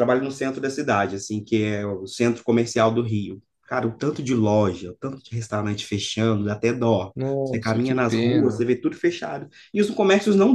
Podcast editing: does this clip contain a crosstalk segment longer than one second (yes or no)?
yes